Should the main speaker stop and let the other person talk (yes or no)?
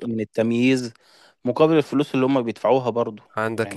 yes